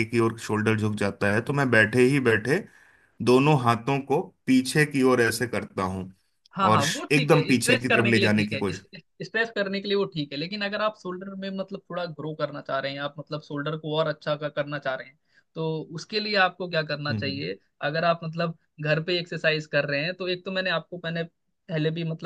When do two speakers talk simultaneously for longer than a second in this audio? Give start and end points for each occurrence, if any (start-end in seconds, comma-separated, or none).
6.7-8.7